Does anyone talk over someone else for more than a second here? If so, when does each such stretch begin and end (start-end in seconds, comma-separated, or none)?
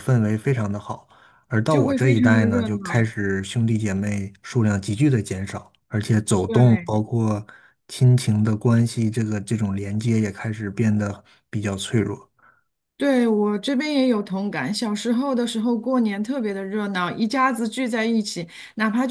1.7-3.0